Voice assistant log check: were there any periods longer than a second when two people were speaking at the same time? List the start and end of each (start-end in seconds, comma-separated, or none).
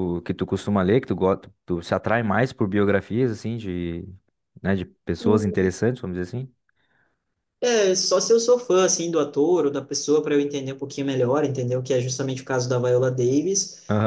none